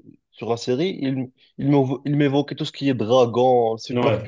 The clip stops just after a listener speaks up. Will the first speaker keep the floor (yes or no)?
yes